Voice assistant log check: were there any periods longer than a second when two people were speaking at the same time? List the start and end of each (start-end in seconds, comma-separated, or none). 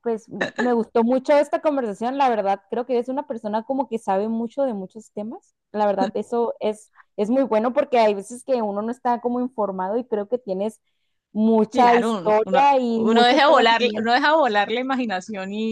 11.7-14.2